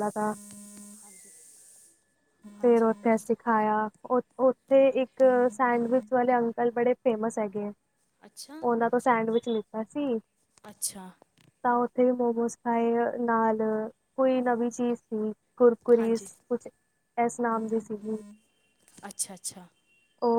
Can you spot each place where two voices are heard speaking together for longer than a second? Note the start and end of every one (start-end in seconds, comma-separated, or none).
none